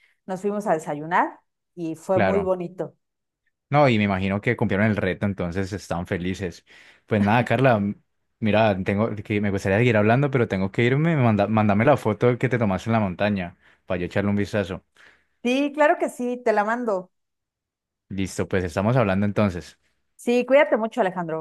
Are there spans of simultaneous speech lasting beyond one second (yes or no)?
no